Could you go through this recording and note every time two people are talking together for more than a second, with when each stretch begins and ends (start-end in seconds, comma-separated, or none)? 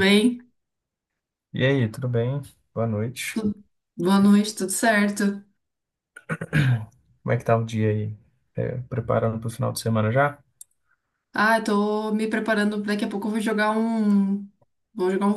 none